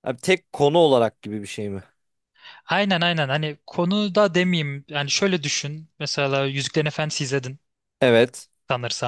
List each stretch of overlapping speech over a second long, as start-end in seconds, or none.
none